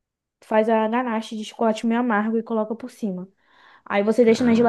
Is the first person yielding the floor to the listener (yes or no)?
no